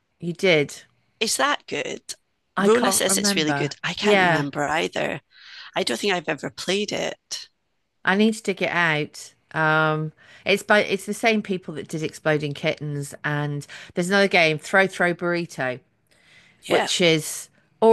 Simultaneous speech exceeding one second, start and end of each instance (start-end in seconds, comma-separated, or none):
2.6-4.5